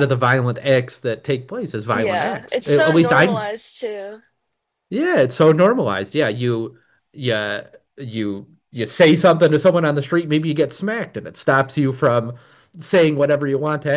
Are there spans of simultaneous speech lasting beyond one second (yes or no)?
yes